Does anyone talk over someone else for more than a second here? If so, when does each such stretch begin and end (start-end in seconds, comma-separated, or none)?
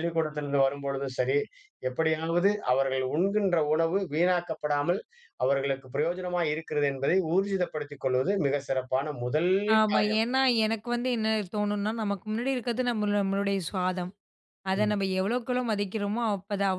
none